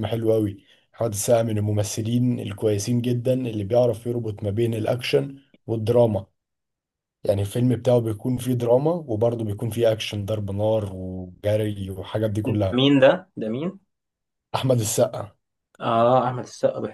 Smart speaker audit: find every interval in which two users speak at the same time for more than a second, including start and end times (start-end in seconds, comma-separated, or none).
none